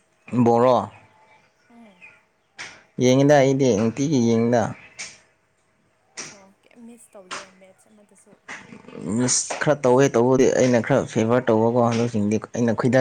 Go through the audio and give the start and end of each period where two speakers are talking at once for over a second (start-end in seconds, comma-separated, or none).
none